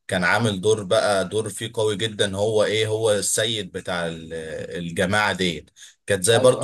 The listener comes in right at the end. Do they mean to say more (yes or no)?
no